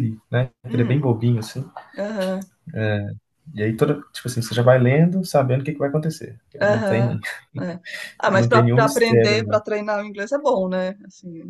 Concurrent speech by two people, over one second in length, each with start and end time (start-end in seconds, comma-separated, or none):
8.3-9.6